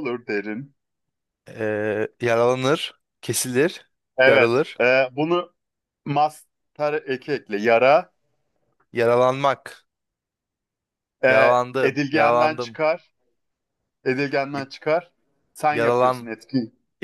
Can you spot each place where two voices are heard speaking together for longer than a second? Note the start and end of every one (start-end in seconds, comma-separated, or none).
11.3-12.8